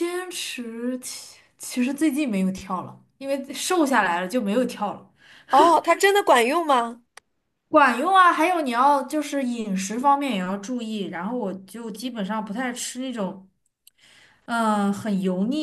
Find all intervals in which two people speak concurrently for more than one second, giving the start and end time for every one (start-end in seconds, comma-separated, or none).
none